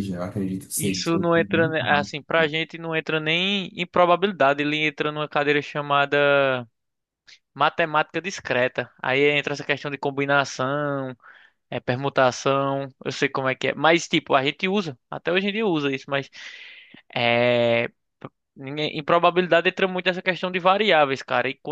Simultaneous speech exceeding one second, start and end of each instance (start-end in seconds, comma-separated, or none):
0.8-2.1